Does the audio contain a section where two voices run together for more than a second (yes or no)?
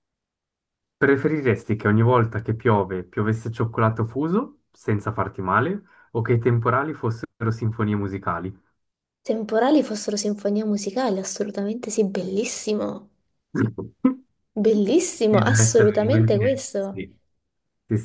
yes